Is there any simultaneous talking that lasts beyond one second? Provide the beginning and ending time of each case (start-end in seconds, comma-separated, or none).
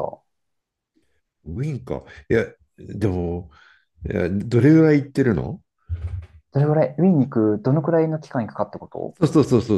none